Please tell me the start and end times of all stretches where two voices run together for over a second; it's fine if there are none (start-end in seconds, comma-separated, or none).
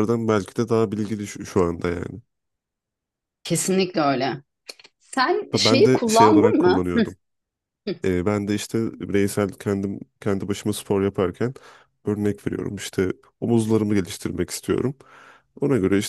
5.5-6.8